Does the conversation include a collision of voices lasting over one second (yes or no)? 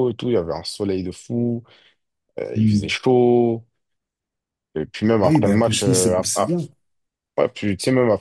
yes